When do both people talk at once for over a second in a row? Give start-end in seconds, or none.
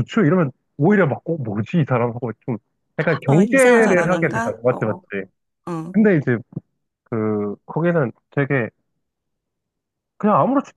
3.3-5.0